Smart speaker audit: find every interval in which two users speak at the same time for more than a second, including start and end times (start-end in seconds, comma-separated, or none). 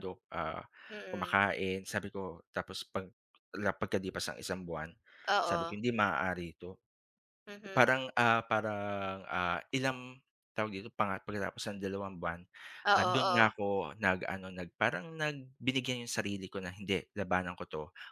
none